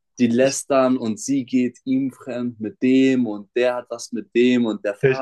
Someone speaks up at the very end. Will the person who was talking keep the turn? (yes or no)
yes